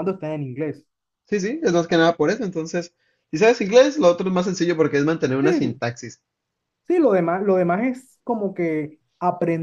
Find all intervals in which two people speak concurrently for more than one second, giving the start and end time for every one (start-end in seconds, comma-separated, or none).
none